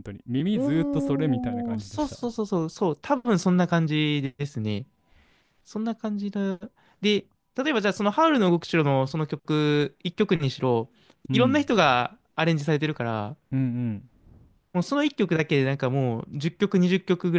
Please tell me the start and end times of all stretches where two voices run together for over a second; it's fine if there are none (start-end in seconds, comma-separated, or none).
0.5-2.2